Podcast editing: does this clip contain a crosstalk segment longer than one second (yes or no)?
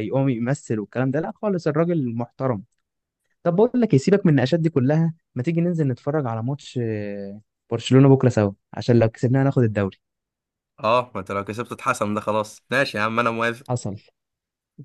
no